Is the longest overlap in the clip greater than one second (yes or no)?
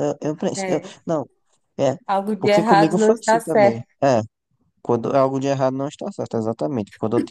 yes